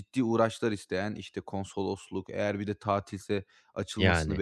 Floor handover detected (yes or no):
no